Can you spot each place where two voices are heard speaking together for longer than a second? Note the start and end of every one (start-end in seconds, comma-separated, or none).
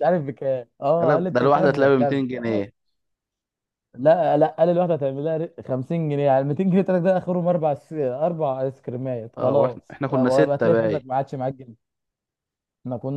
1.0-2.6, 9.4-11.0